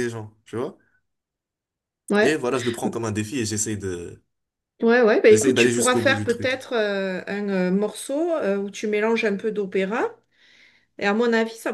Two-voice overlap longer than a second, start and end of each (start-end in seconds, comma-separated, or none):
5.3-6.5